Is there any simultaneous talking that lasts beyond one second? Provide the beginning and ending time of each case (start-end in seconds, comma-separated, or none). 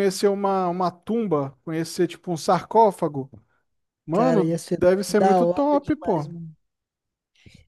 4.1-6.3